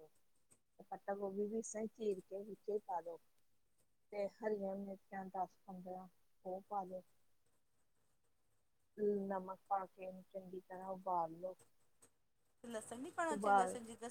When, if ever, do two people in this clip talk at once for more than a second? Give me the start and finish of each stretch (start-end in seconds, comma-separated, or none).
none